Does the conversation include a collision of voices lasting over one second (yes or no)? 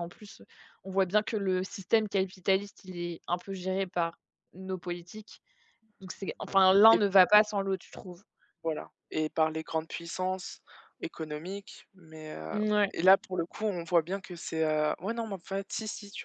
no